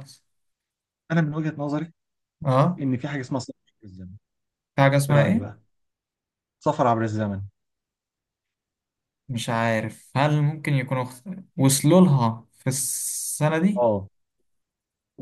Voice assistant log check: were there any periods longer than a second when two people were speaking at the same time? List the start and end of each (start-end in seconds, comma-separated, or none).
none